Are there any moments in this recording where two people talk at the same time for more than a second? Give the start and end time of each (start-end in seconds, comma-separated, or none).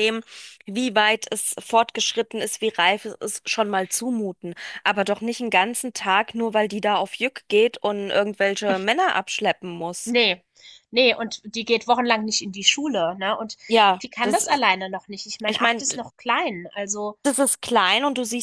none